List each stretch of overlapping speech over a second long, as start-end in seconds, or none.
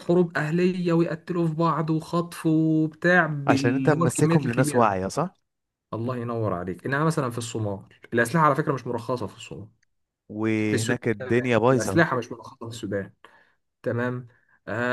3.5-5.0